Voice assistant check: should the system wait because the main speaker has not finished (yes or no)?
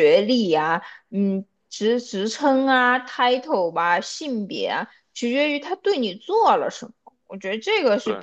yes